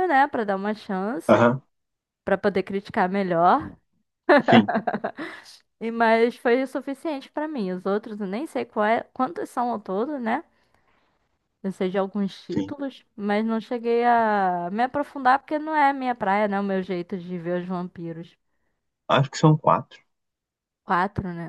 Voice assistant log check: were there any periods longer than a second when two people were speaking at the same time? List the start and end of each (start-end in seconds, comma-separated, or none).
none